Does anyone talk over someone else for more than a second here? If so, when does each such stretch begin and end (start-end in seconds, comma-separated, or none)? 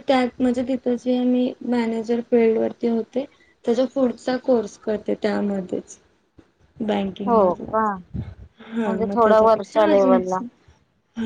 8.8-10.4